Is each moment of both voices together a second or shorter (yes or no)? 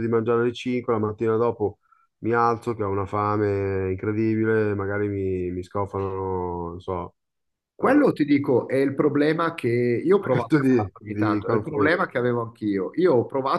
no